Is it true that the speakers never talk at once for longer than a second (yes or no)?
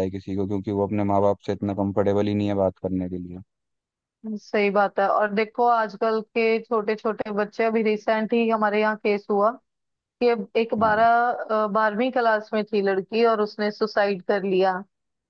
yes